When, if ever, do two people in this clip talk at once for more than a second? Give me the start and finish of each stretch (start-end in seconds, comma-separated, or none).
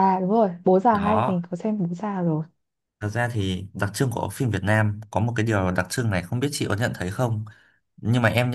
none